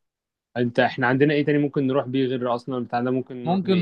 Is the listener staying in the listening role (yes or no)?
no